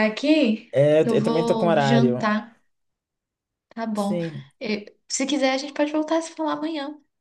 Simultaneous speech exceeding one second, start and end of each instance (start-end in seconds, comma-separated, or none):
0.7-2.3